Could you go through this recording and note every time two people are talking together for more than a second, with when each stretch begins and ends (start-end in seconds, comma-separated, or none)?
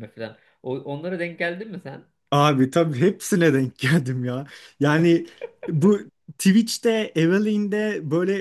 none